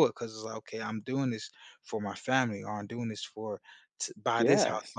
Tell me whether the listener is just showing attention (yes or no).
yes